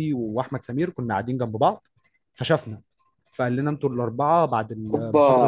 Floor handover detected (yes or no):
yes